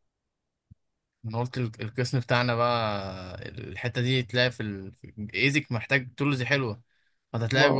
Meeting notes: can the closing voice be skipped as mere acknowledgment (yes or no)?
yes